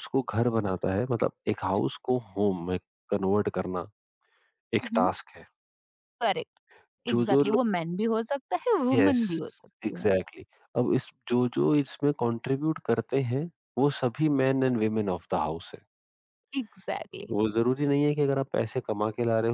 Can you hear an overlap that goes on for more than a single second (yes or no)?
no